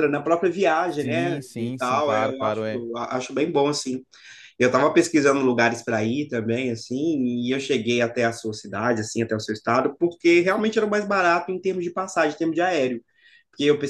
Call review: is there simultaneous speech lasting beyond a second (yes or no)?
yes